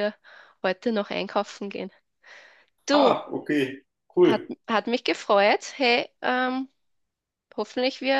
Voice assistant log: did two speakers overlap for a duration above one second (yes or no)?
no